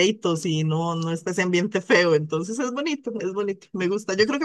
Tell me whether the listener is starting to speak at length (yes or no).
no